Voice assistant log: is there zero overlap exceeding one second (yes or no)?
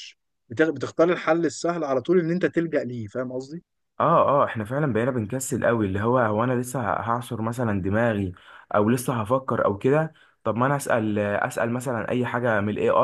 yes